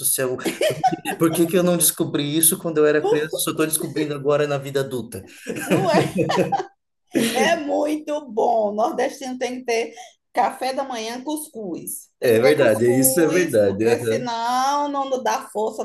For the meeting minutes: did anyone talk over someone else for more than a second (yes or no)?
yes